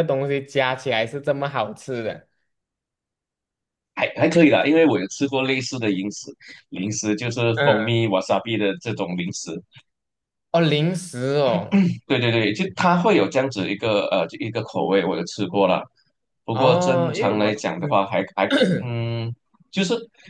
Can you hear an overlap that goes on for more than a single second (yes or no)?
yes